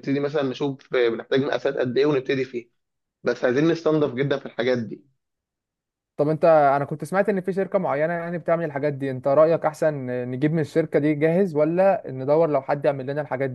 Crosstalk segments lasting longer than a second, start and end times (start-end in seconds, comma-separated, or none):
none